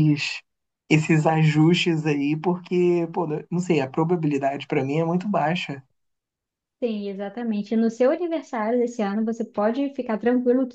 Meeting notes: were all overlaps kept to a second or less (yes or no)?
yes